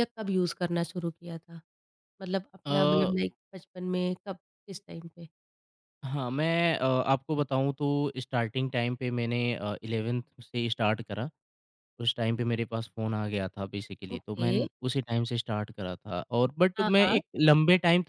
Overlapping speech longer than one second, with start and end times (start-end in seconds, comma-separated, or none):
none